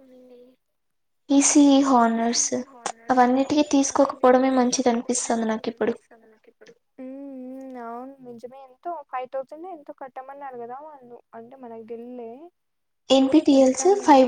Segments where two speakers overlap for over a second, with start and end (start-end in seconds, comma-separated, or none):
3.9-5.9